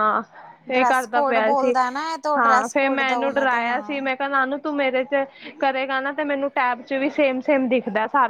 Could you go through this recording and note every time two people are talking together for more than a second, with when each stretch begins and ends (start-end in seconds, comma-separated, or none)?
2.4-4.0